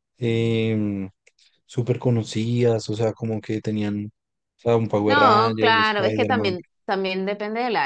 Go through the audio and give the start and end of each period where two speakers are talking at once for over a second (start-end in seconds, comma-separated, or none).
5.0-6.5